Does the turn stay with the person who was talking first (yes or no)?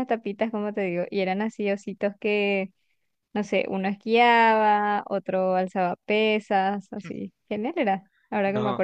yes